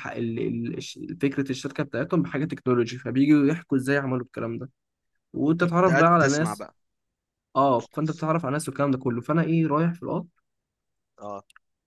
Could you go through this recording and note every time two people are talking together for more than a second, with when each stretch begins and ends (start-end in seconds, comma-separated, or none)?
5.4-6.6